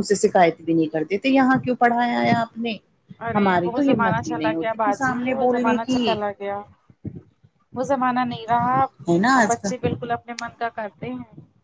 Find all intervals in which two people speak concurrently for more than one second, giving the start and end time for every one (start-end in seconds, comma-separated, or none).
3.4-6.1